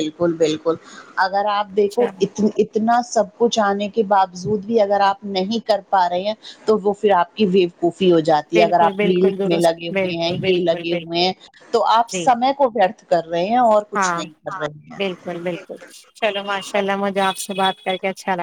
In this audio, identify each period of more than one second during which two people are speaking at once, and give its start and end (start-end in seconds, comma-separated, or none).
8.5-11.2